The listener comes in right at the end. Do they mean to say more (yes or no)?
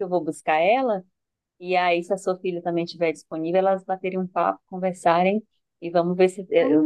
yes